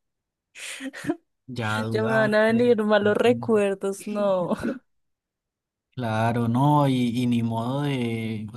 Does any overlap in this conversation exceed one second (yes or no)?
yes